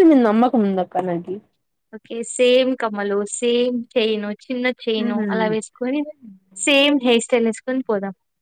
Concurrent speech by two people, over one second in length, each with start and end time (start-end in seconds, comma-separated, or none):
none